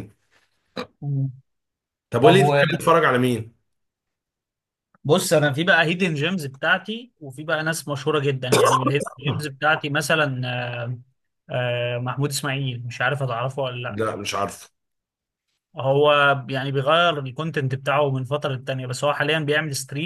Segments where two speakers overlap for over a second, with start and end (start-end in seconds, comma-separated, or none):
none